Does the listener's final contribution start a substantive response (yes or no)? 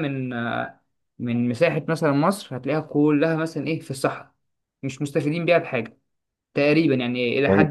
yes